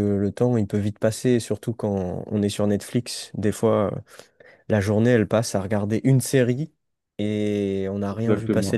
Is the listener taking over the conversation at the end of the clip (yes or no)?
yes